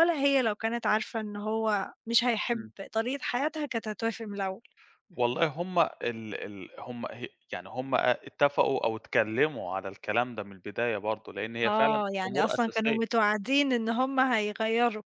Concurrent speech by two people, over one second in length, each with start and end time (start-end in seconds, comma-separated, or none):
11.7-13.0